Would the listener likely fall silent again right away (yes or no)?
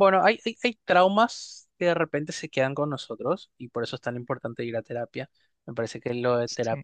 yes